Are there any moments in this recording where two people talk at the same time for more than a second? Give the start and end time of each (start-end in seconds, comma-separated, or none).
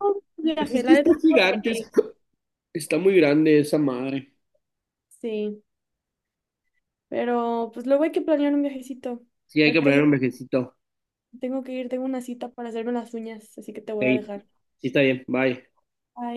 0.6-1.9